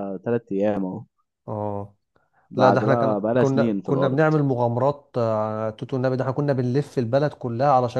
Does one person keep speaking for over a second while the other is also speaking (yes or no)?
yes